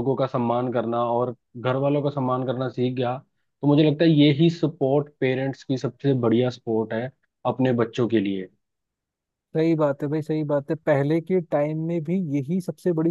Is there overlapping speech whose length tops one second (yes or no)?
no